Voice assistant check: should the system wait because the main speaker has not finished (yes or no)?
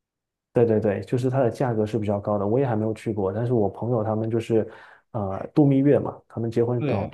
yes